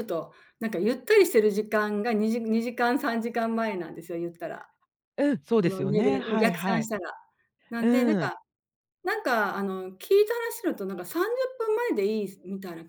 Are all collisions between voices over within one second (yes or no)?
no